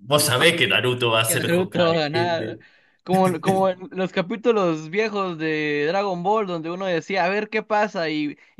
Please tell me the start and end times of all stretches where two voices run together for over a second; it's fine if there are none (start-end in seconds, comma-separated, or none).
1.2-2.5